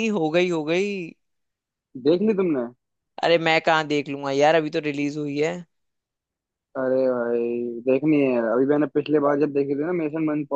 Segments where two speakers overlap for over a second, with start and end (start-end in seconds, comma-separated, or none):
none